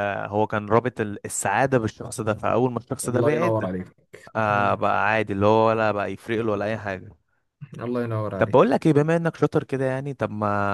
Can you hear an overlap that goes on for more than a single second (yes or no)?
no